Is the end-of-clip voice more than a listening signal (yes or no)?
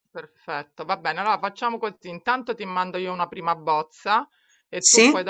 no